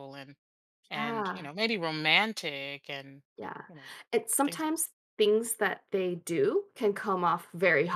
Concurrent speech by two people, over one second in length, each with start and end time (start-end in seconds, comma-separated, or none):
none